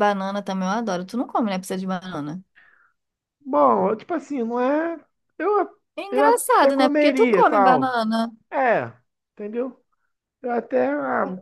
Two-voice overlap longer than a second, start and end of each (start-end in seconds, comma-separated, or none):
6.0-8.0